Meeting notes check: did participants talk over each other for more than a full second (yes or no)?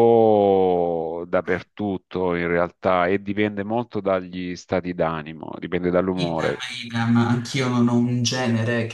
no